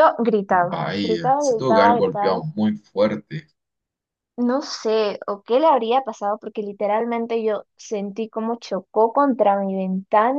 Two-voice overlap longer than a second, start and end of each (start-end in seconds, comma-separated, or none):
0.7-2.4